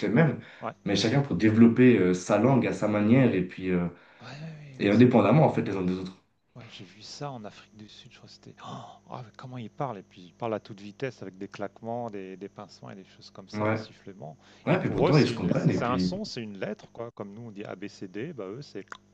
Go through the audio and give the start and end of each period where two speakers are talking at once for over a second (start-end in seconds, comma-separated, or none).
14.7-16.1